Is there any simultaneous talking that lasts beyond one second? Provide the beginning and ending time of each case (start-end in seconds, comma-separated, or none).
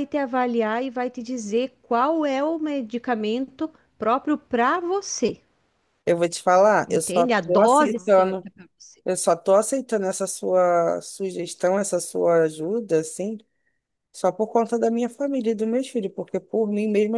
6.9-8.5